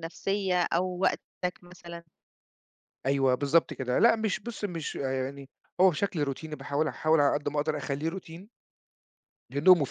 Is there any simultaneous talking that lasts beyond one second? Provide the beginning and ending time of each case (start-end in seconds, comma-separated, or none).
none